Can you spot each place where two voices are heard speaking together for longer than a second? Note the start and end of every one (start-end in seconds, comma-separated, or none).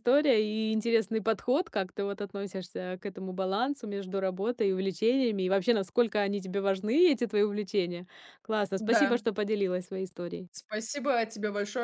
none